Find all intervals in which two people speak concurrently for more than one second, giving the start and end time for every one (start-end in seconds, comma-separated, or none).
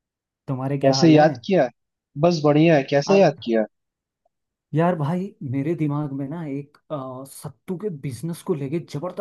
none